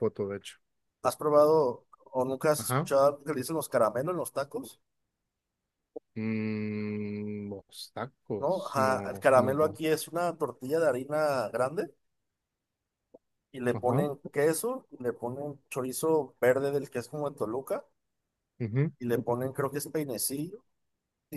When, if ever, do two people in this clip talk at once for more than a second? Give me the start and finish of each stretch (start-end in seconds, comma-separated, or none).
8.4-9.8